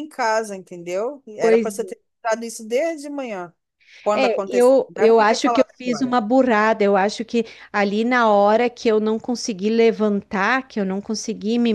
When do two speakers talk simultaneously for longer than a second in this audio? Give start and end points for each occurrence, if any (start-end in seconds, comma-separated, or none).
4.1-6.2